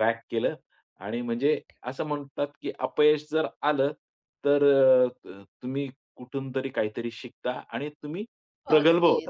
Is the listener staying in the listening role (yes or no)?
no